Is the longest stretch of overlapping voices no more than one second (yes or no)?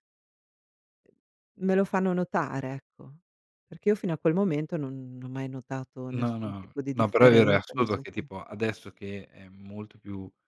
no